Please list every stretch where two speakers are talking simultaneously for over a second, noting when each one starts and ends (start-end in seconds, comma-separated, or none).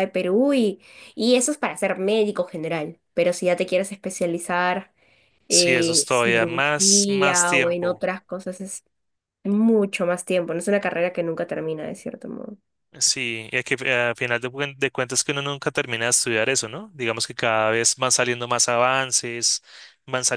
5.5-8.1